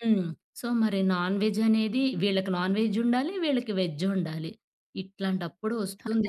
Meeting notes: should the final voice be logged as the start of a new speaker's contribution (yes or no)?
yes